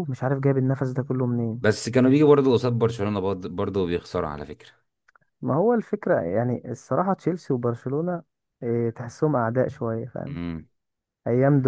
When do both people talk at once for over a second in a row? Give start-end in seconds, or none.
none